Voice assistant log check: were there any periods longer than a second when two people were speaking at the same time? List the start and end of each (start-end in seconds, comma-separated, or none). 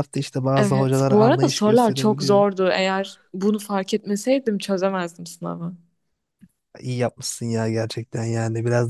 0.5-2.5